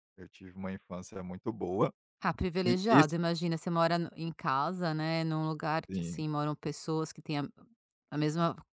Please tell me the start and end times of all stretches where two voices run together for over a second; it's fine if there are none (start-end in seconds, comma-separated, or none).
none